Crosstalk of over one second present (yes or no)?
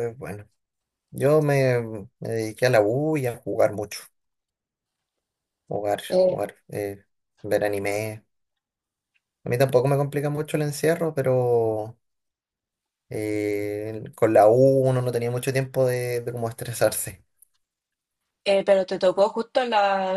no